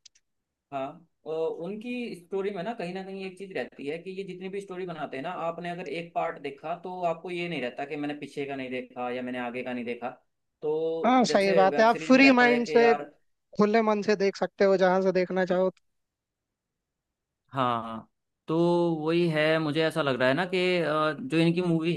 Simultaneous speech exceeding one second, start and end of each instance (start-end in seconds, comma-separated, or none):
11.3-12.9